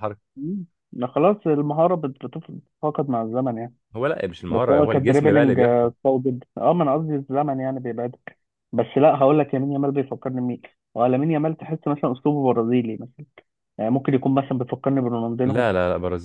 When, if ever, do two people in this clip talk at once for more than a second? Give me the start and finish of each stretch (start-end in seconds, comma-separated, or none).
4.5-5.9